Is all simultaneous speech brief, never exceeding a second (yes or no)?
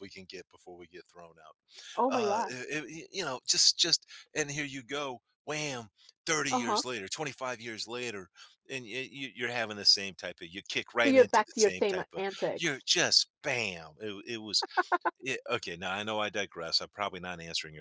no